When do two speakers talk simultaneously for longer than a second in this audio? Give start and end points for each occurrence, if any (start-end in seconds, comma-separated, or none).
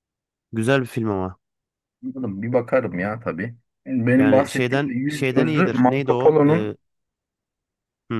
4.2-6.7